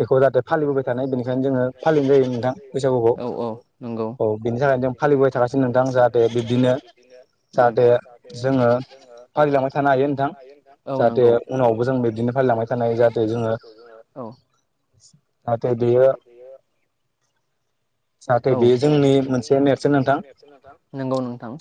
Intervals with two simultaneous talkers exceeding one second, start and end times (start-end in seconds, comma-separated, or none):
18.5-20.2